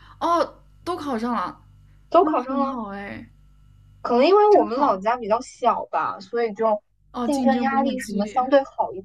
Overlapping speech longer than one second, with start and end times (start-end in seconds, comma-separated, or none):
7.2-8.5